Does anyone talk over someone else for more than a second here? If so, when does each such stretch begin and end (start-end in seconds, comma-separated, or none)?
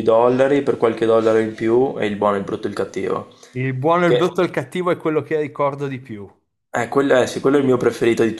none